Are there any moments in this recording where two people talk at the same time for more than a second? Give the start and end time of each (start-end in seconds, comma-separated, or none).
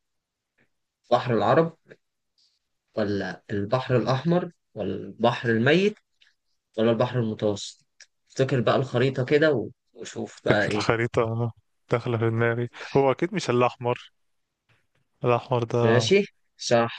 none